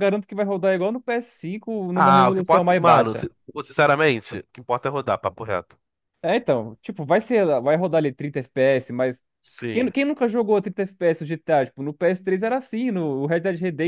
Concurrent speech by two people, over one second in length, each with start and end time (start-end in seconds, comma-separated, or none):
1.9-3.3